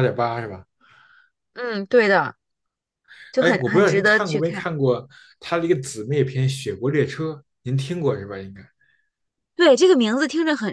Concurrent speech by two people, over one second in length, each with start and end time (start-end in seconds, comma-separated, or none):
3.4-4.7